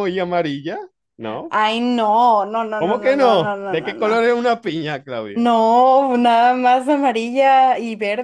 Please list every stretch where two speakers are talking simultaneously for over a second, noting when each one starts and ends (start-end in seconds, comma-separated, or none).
2.8-4.4